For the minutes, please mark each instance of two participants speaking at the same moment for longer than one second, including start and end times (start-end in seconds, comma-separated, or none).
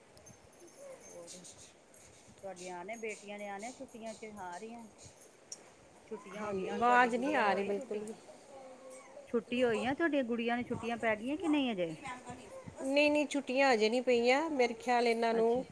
6.4-7.7